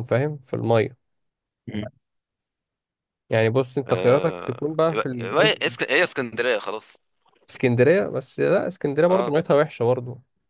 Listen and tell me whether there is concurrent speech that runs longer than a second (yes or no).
yes